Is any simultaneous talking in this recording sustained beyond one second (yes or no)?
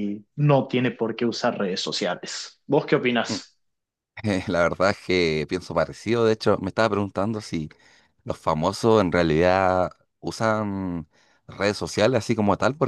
no